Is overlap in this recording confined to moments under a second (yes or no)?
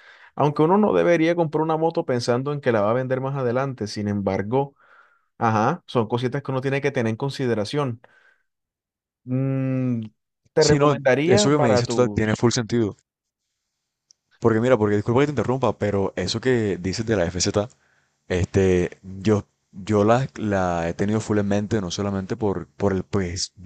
no